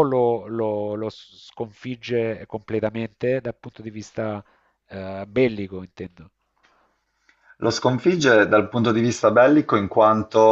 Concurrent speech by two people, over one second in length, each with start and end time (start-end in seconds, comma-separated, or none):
none